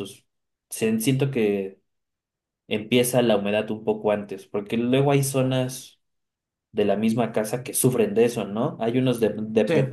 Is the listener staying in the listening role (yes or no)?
yes